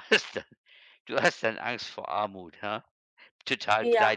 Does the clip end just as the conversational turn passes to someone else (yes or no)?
yes